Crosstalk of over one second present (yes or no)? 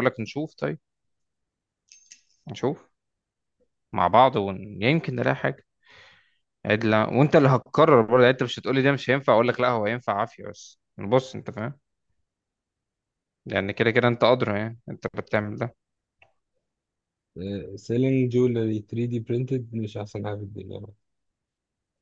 no